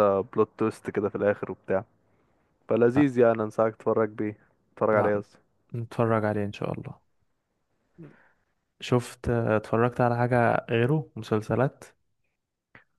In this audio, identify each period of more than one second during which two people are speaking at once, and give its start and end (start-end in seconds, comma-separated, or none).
none